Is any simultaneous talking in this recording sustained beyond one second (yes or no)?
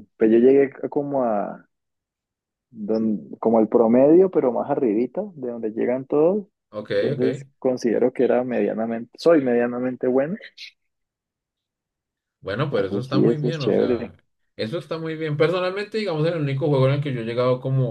yes